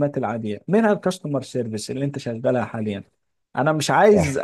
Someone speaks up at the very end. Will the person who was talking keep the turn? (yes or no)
yes